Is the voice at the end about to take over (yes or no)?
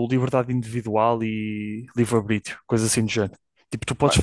no